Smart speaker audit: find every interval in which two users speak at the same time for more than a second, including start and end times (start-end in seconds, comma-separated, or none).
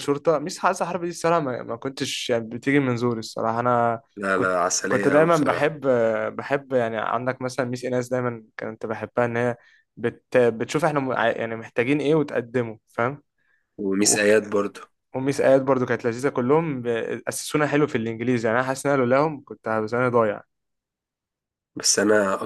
4.2-5.7